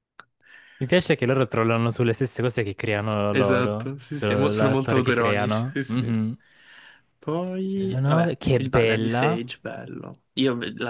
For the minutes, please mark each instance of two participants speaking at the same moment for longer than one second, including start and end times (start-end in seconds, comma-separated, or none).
3.3-6.2, 7.9-9.4